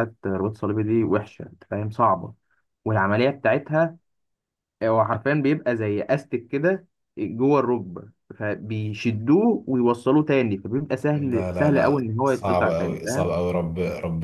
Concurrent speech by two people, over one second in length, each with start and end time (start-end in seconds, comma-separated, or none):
11.1-13.3